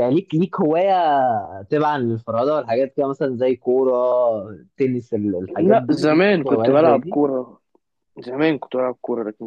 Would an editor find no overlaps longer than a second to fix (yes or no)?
no